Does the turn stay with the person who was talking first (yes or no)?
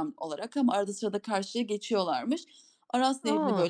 yes